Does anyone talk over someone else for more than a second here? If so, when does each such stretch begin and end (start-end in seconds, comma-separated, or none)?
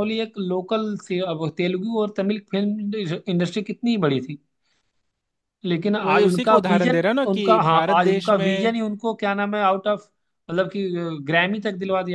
6.0-8.7